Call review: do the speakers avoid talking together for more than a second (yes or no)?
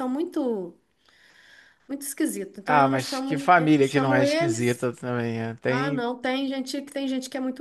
no